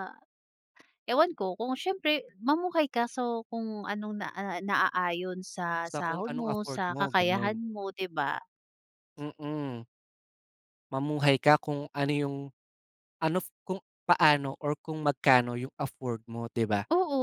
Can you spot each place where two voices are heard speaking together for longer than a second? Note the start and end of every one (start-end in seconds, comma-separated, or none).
5.8-7.6